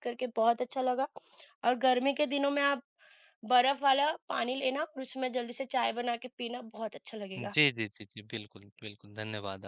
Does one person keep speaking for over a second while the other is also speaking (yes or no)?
no